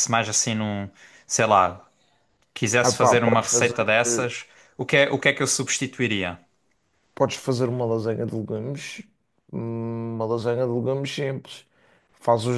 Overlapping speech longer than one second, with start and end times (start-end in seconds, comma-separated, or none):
2.8-4.3